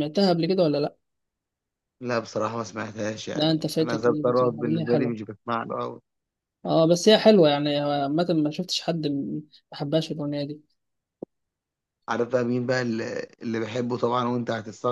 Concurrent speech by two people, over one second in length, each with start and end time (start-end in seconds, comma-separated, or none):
3.4-5.2